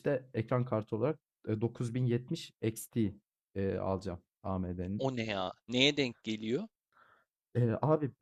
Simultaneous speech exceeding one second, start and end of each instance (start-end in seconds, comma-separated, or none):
none